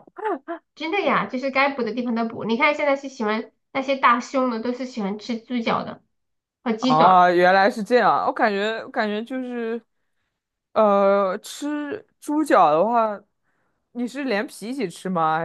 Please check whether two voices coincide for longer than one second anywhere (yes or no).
no